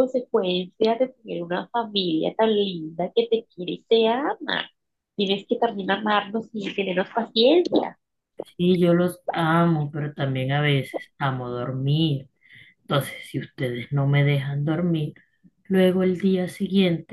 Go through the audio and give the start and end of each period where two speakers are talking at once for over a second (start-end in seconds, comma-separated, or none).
none